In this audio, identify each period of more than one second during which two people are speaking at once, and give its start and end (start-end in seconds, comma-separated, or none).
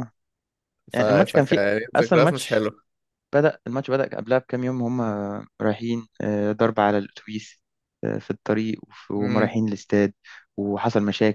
0.9-2.6